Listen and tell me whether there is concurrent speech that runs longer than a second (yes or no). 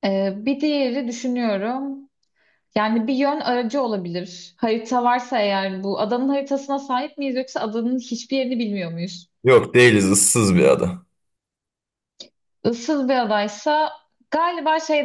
no